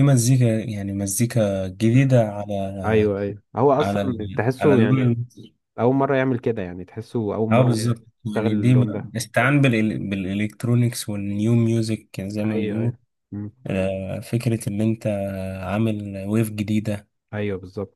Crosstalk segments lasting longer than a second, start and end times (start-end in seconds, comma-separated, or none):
3.8-5.1, 7.5-9.1